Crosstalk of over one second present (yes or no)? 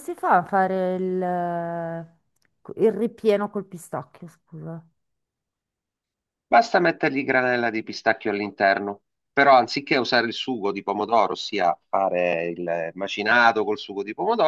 no